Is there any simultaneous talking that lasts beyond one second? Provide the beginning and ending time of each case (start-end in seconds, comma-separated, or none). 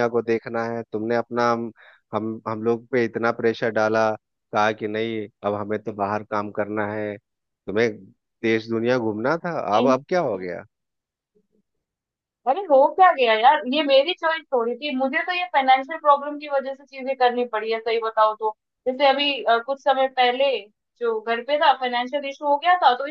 none